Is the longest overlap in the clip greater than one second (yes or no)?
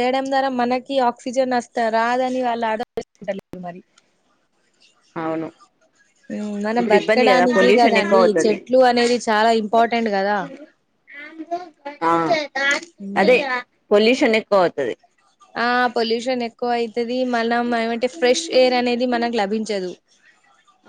yes